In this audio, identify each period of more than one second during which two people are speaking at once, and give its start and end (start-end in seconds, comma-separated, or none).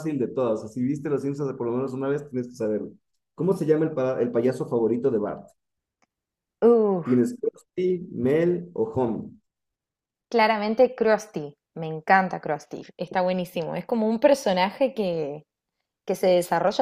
none